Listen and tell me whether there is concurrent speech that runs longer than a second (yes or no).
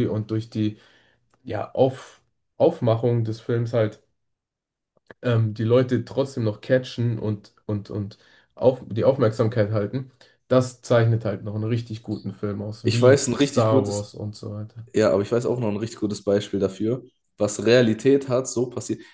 yes